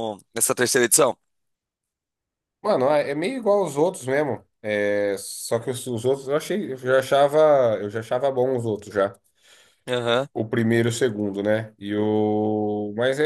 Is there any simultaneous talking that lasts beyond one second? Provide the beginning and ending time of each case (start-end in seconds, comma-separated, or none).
none